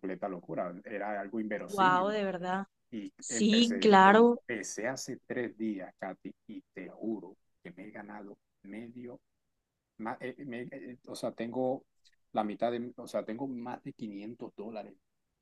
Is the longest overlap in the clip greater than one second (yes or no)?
yes